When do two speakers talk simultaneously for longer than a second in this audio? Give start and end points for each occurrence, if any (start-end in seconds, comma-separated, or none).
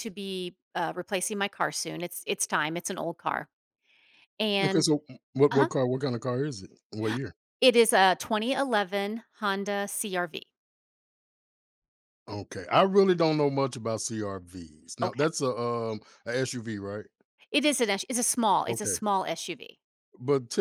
none